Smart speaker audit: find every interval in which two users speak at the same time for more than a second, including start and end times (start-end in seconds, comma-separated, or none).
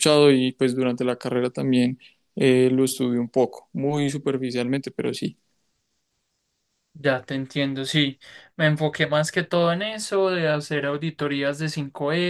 none